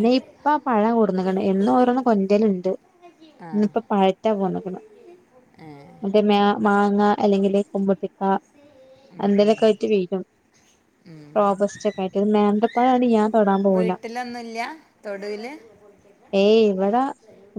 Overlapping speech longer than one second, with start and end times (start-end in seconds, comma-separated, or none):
none